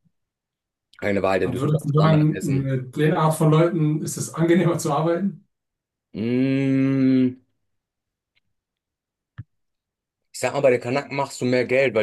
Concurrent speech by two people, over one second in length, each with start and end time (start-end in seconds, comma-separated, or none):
1.4-2.8